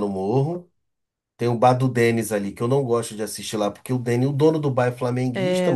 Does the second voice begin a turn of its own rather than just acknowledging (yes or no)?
yes